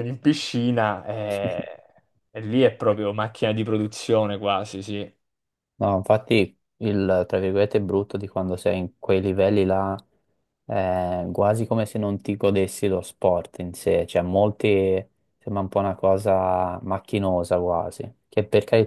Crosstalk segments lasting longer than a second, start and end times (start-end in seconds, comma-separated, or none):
none